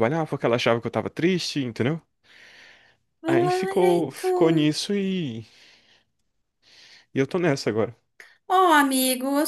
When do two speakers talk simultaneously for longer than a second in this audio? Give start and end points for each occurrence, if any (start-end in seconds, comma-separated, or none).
3.2-4.7